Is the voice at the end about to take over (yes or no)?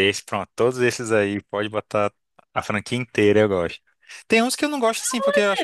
no